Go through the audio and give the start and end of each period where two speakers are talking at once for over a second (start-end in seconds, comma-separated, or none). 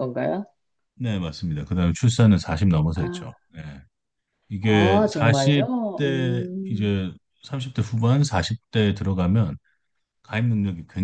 4.6-6.9